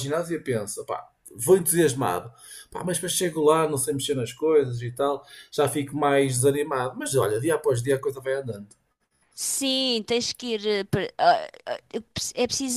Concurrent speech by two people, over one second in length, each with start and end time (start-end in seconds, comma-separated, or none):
none